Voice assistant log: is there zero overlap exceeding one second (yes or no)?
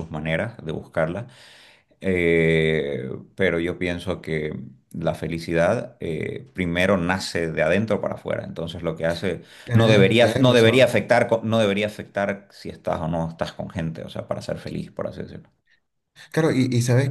no